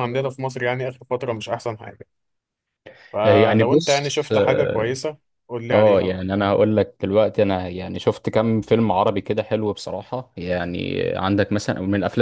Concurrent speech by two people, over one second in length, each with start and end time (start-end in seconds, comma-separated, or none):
3.2-5.0